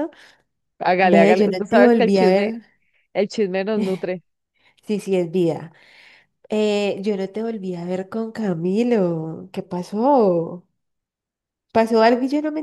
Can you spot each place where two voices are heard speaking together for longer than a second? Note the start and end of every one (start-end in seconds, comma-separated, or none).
1.0-2.5